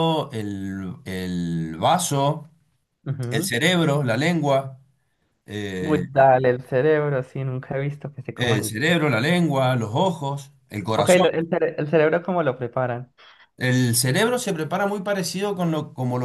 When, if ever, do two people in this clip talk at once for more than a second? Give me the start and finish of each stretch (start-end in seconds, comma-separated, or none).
none